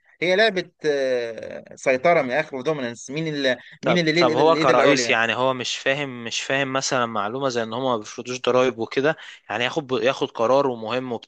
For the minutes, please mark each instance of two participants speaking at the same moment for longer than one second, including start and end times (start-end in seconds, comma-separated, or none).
3.8-5.2